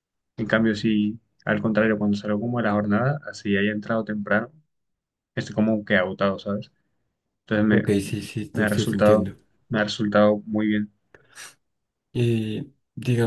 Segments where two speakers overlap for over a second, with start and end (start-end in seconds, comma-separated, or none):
7.7-9.3